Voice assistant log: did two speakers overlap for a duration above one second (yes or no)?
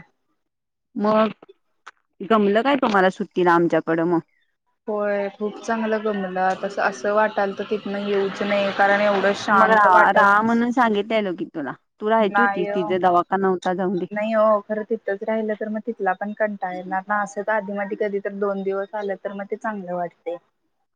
yes